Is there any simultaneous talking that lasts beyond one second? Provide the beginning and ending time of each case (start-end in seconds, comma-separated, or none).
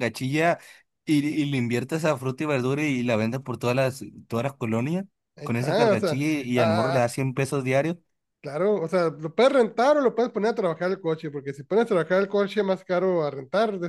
5.4-7.1